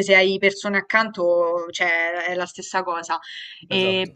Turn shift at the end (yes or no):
no